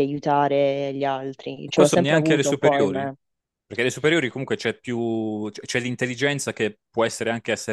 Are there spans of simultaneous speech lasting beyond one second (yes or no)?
yes